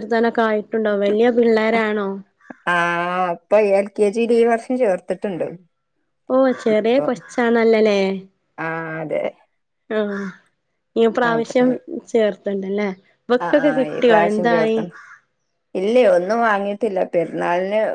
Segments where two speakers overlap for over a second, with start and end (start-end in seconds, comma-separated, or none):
none